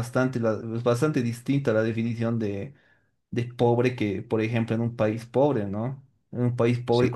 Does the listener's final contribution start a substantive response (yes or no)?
no